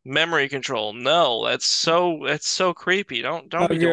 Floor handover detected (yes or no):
yes